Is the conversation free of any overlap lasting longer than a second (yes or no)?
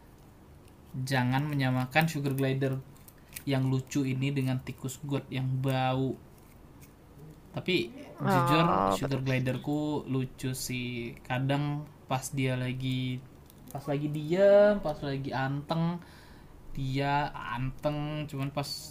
no